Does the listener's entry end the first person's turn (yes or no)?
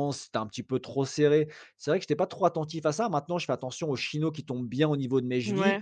no